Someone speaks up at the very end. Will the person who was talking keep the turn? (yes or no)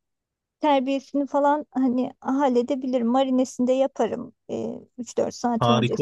no